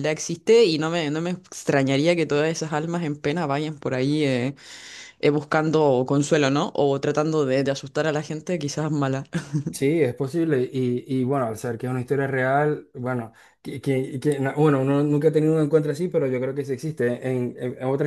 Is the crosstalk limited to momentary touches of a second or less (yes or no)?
yes